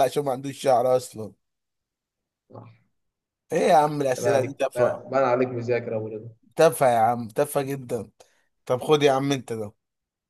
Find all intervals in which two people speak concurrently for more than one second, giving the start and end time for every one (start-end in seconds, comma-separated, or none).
3.7-5.0